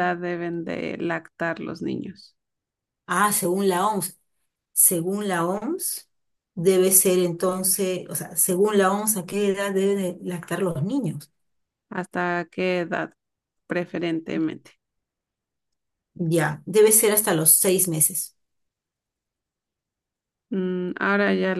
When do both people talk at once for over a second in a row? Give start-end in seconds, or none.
none